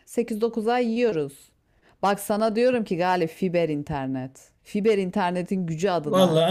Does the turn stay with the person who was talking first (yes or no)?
no